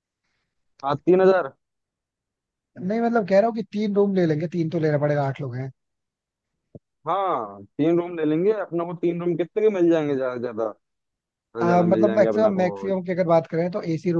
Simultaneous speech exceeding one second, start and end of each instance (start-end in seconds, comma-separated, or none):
11.7-12.9